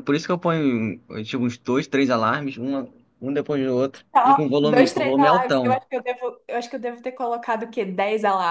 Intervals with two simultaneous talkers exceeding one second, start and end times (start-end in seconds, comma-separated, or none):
4.1-5.8